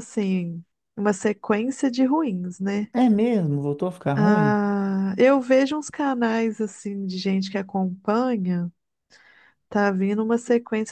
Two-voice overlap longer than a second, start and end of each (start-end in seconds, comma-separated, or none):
none